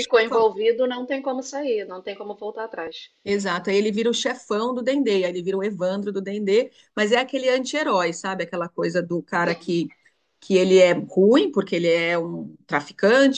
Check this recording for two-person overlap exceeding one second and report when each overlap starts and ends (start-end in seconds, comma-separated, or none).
none